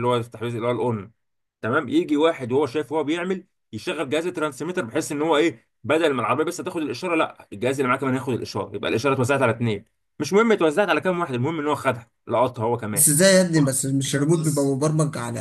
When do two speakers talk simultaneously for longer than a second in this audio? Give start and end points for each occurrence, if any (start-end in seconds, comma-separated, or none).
none